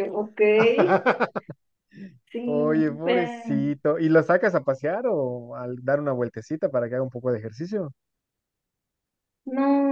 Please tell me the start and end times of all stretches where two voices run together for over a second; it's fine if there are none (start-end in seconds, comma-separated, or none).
2.5-3.8